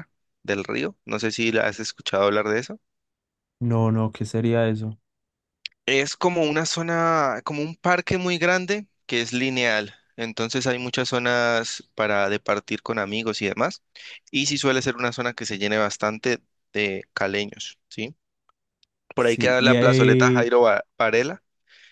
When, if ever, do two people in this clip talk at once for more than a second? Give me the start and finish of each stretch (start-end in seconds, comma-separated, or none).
19.2-20.5